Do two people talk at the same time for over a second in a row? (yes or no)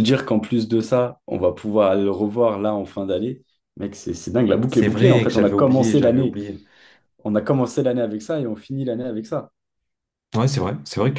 yes